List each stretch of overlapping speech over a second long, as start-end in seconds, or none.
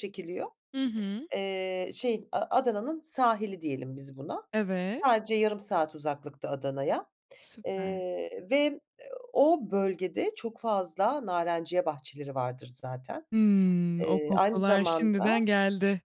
14.0-15.3